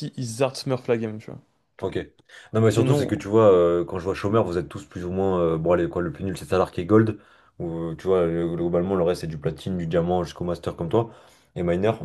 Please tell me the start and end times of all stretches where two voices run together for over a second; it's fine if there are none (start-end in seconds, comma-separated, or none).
none